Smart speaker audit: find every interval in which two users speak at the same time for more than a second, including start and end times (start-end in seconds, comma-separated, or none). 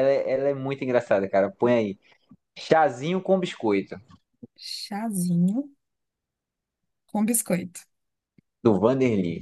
none